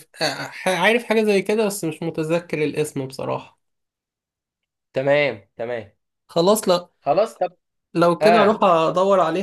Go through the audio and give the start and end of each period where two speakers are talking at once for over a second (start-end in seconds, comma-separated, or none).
none